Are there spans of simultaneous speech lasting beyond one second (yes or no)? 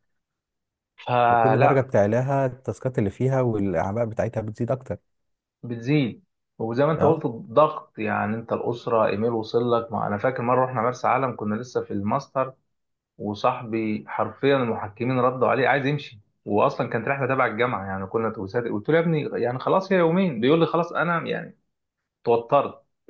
no